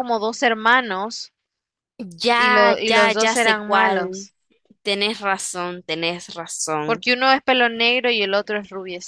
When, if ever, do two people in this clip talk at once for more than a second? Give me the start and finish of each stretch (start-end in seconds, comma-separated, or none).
2.3-4.3